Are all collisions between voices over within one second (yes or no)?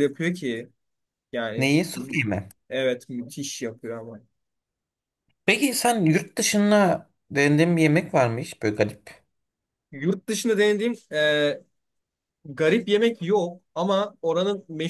yes